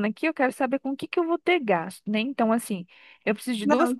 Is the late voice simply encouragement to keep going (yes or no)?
yes